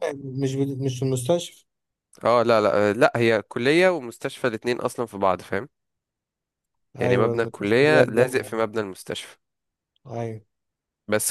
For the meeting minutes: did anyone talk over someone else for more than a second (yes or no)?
yes